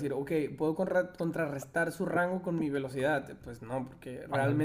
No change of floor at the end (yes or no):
yes